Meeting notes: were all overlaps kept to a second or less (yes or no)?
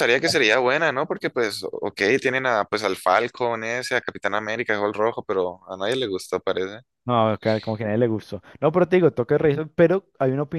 yes